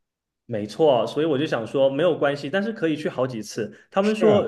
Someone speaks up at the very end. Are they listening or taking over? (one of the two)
listening